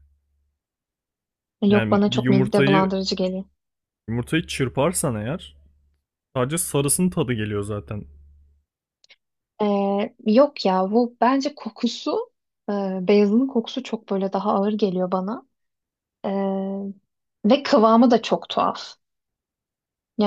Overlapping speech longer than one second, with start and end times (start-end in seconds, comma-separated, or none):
1.7-2.9